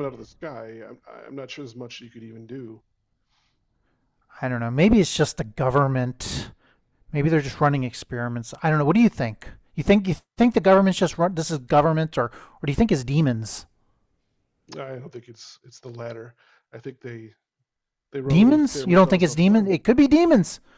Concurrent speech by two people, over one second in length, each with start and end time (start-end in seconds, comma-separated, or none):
18.2-19.7